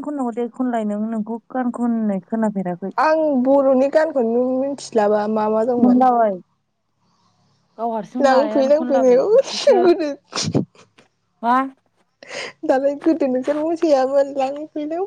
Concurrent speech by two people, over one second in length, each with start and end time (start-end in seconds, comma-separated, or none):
8.2-9.8